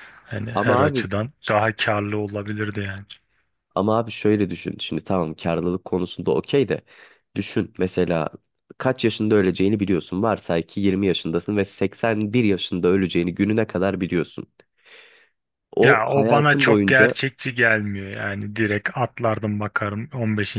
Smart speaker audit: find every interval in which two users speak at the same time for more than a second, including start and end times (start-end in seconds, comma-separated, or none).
15.8-17.1